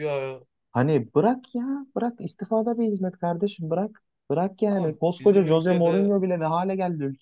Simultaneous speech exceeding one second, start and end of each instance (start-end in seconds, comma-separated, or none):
4.7-6.2